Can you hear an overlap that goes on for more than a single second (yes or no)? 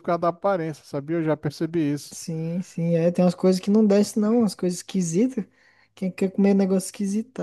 no